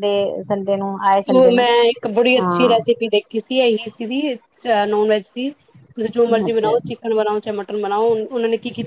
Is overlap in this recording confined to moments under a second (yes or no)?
yes